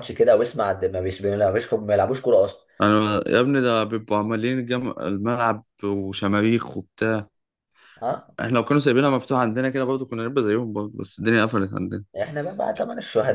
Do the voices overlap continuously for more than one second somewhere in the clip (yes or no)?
no